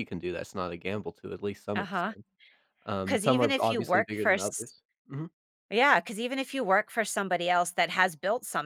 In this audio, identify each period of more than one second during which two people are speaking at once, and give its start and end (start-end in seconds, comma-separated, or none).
3.0-4.7